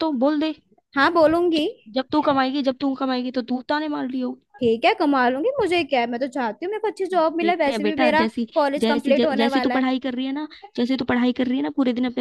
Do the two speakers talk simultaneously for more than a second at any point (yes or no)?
yes